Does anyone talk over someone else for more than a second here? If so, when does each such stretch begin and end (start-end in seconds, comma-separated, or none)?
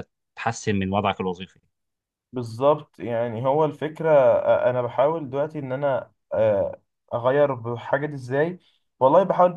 none